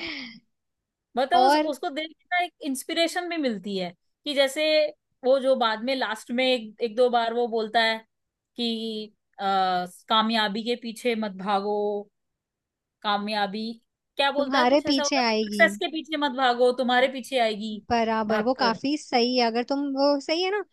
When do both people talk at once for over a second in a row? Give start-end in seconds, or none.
14.4-15.6